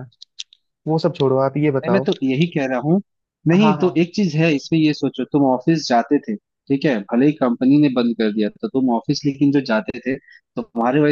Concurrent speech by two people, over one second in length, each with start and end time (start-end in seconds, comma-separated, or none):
none